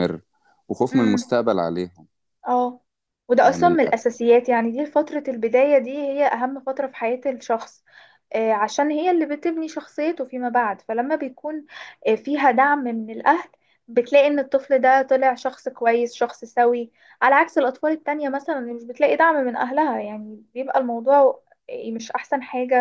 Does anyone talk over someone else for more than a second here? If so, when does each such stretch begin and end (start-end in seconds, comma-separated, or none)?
none